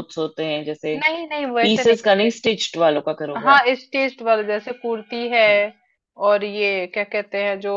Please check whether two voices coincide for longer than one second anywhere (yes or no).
no